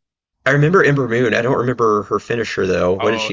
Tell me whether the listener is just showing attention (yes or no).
no